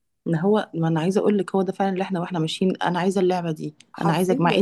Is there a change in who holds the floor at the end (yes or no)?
no